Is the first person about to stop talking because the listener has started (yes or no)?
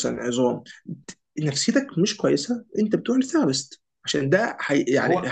no